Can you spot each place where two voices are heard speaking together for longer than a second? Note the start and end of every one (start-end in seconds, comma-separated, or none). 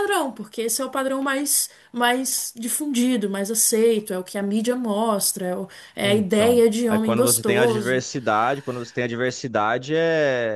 6.0-8.0